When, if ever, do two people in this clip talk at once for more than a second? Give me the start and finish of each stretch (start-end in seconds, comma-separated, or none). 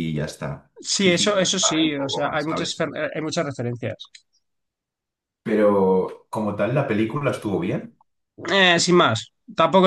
0.8-2.9